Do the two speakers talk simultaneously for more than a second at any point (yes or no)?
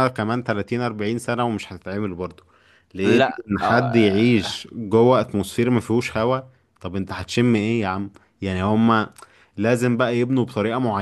yes